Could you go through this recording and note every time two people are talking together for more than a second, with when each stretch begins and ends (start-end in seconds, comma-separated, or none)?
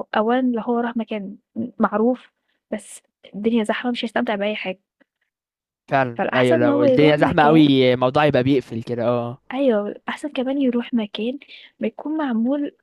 6.2-7.6